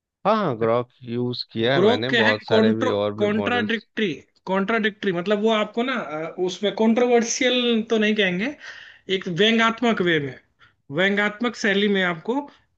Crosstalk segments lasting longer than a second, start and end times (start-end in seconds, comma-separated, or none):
1.7-3.9